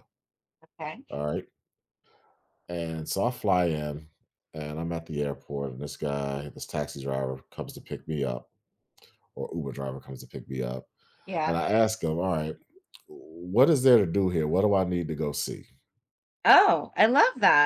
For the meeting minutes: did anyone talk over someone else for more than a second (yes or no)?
no